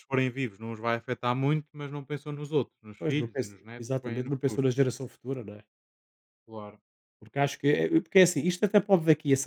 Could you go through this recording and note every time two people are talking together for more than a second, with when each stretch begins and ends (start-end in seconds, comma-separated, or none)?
3.0-4.6